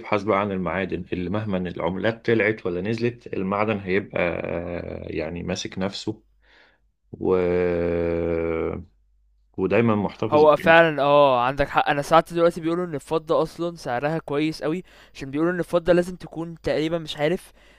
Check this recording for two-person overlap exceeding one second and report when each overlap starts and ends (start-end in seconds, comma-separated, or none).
none